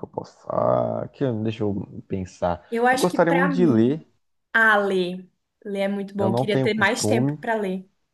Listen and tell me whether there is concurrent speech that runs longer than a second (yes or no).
yes